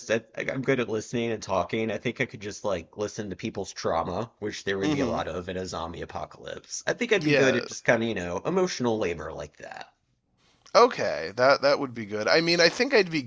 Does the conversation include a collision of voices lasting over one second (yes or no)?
no